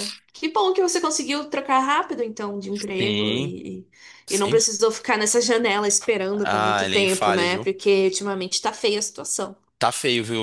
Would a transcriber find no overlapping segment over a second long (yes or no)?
no